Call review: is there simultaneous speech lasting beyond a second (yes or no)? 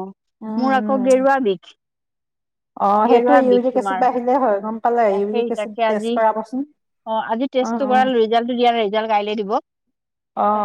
no